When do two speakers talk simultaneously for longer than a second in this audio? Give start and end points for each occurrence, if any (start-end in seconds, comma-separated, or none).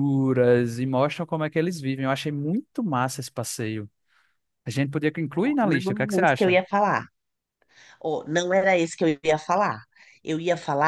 5.3-6.6